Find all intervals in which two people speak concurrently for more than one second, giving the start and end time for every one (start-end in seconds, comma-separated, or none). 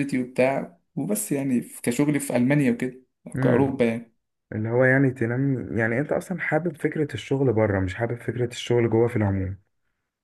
none